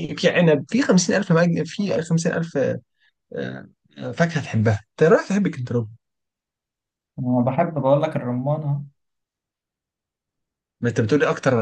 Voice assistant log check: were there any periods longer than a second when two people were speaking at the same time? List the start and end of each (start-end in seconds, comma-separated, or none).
none